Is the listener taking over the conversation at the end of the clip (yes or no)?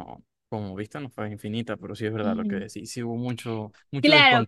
yes